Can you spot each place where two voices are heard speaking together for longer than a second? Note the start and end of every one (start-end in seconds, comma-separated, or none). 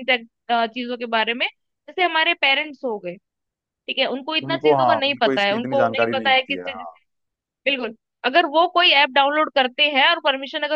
4.5-6.6